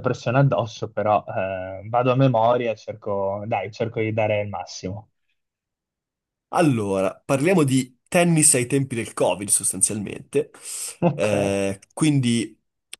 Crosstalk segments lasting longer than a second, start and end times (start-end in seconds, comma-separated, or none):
none